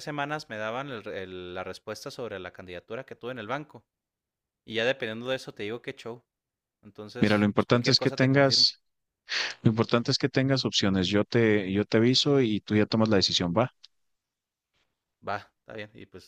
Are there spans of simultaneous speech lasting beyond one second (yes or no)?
yes